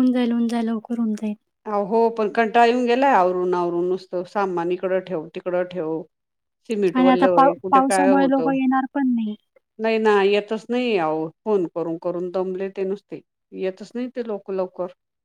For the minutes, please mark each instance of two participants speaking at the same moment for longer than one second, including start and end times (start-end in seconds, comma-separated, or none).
7.0-8.5